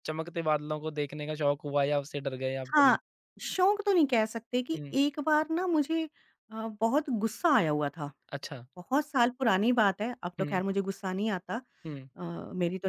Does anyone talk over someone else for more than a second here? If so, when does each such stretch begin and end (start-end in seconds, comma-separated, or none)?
none